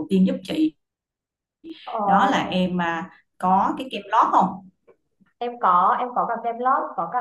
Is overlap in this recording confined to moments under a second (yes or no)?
yes